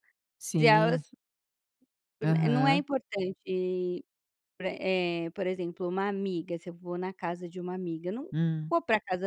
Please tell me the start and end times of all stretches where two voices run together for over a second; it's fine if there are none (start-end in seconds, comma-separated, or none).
none